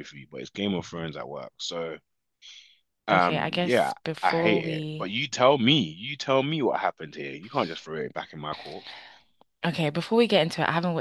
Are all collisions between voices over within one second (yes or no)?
no